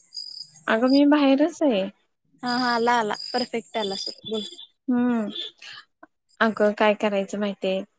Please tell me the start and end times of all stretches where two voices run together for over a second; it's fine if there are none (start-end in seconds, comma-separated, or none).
none